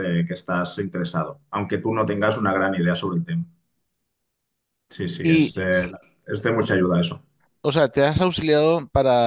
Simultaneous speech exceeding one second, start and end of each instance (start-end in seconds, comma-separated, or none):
none